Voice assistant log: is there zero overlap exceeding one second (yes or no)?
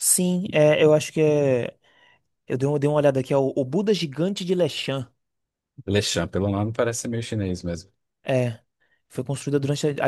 yes